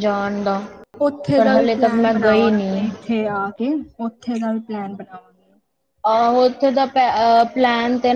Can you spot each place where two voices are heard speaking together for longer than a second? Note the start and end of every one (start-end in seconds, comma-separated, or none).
1.4-2.8